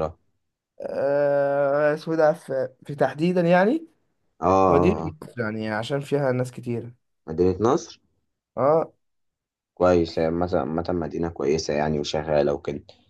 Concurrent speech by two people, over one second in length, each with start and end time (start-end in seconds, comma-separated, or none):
none